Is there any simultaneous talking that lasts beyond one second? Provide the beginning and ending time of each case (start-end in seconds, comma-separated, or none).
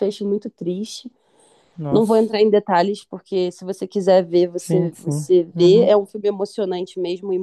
4.6-5.9